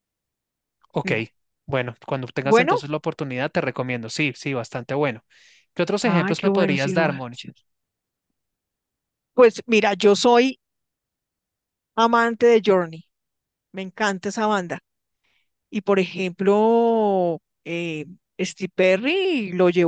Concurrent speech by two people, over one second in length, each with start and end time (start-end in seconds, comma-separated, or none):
6.0-7.4